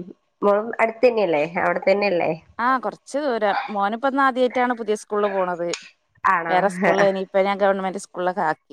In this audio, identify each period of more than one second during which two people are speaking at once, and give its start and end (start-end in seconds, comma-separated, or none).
none